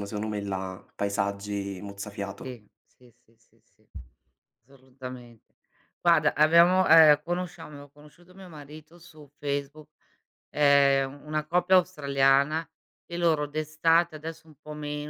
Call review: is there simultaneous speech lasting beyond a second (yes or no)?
no